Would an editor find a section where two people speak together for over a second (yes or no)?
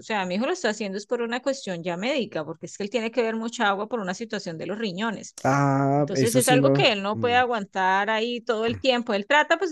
yes